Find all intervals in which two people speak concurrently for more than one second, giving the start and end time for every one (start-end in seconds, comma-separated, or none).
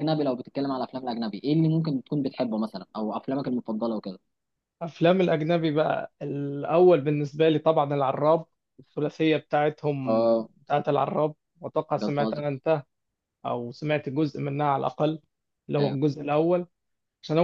none